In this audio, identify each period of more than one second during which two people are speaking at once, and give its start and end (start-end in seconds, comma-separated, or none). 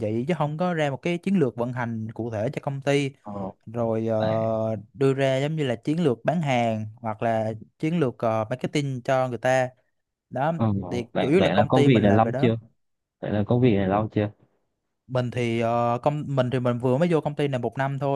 11.1-12.5